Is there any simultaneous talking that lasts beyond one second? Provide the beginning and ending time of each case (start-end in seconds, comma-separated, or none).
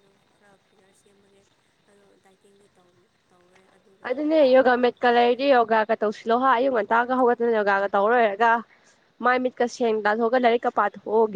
none